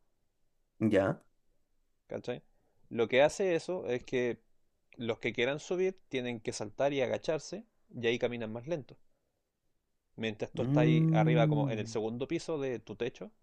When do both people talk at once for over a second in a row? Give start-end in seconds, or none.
10.6-12.0